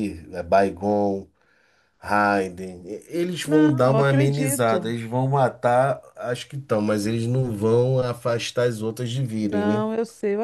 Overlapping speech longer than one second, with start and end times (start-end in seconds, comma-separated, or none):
3.4-4.9